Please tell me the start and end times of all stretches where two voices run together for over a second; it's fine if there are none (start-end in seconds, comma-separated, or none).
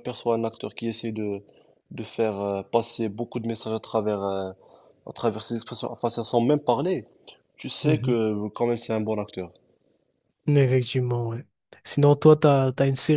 none